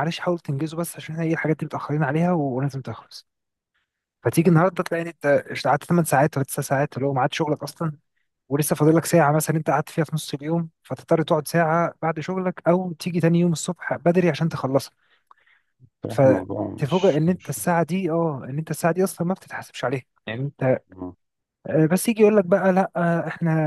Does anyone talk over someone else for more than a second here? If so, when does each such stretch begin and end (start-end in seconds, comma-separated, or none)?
16.1-17.6